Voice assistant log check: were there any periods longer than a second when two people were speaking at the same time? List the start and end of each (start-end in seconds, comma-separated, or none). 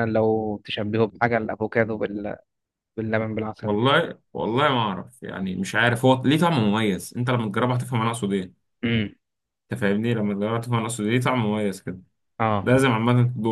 none